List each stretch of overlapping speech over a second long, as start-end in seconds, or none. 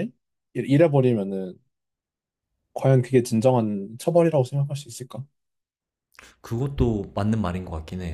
none